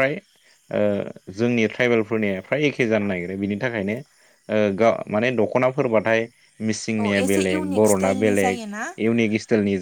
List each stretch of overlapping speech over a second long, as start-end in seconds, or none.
7.0-8.6